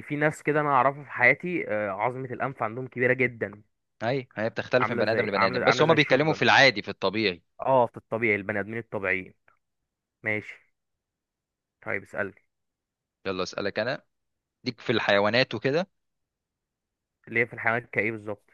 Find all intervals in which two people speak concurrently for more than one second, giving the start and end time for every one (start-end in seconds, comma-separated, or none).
4.8-6.4